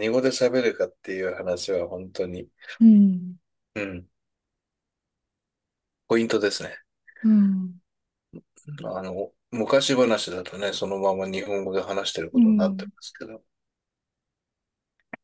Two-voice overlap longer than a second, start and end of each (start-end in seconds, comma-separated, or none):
none